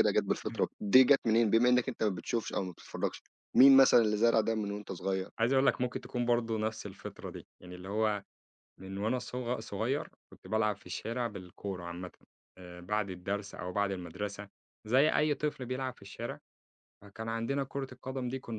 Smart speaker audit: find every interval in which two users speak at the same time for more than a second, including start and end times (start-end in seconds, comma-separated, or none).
none